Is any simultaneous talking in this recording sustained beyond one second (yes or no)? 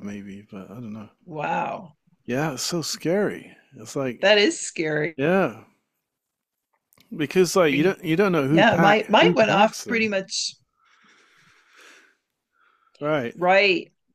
yes